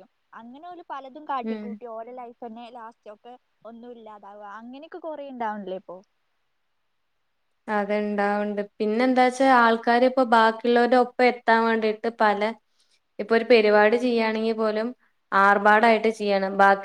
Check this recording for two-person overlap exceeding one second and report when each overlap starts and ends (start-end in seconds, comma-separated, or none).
none